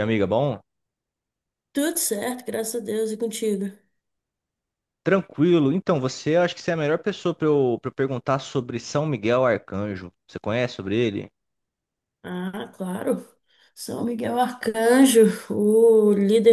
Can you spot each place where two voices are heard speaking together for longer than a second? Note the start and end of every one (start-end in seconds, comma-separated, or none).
none